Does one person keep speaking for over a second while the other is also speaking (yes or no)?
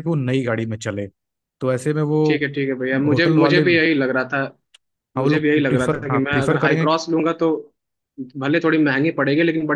yes